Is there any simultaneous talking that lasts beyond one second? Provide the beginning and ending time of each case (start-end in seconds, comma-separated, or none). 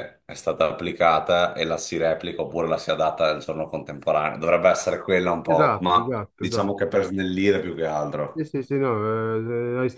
5.4-7.0